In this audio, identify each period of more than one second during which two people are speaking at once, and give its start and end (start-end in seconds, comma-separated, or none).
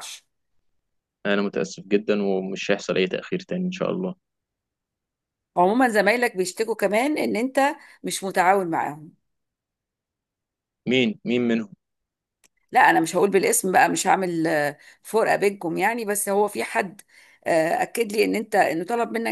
none